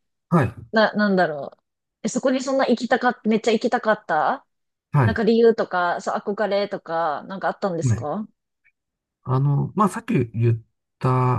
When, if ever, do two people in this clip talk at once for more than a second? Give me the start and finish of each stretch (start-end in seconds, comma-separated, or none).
none